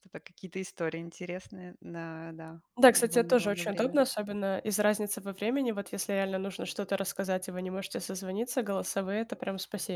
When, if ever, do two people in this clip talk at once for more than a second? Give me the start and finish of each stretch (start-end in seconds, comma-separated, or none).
2.8-4.0